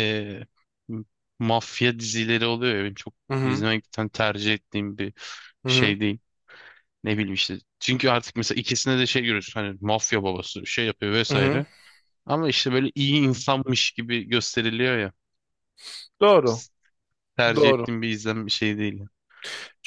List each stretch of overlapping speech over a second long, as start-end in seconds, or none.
none